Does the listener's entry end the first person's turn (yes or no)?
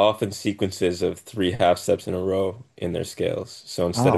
no